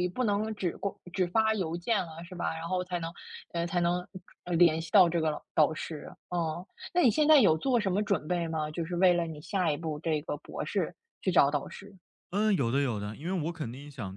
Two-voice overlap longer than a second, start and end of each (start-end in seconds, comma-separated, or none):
none